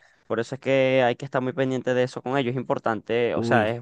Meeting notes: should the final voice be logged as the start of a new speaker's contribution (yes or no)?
no